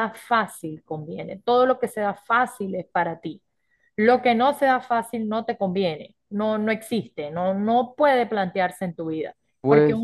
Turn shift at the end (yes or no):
no